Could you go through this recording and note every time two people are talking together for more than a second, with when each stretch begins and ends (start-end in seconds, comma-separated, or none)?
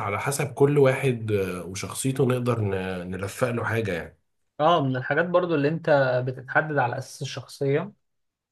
none